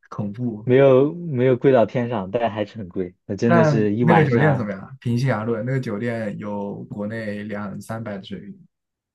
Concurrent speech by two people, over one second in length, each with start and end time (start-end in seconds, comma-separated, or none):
3.5-4.7